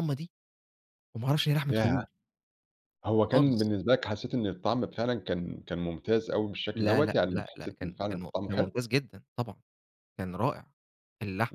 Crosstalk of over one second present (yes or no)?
yes